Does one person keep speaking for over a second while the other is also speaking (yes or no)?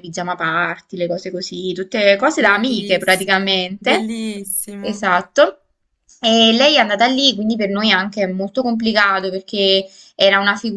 yes